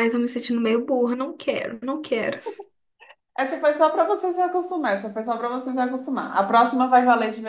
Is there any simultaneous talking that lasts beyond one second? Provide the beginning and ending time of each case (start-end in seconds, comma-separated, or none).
none